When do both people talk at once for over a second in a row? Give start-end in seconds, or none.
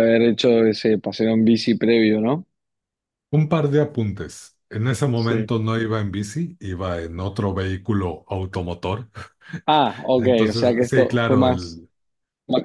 10.2-11.8